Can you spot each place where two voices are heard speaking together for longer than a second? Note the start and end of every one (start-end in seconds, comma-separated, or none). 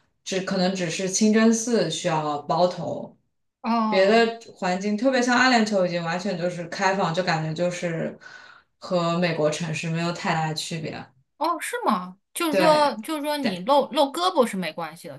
none